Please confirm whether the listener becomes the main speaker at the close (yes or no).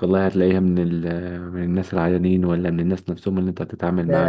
yes